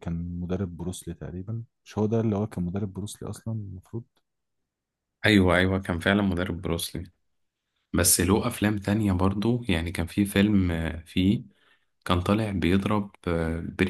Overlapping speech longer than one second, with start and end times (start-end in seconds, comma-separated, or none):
none